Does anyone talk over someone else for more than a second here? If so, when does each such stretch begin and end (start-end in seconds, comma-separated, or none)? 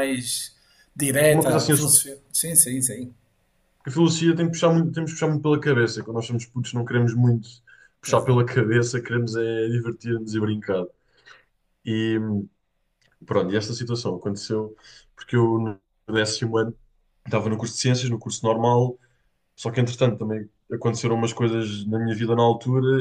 none